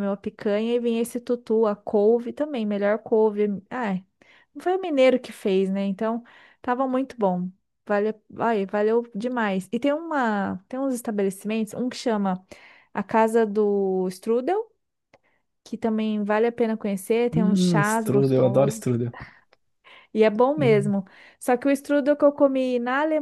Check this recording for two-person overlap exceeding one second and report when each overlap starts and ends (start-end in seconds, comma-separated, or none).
17.3-18.9